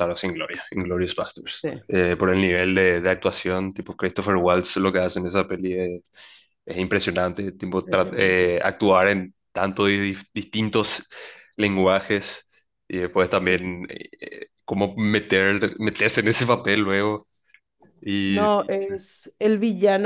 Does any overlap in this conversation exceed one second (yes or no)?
no